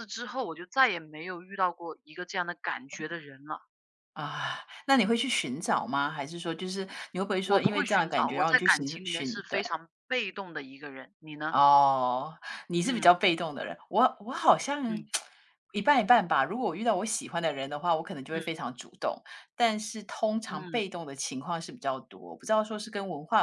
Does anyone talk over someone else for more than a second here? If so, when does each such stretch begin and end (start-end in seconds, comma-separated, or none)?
7.4-9.6